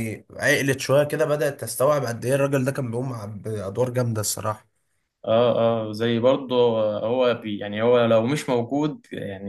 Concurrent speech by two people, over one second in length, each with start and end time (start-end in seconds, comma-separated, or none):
none